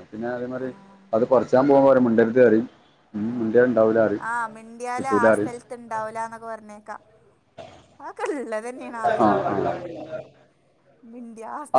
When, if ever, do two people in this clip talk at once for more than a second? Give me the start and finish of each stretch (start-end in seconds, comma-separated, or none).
none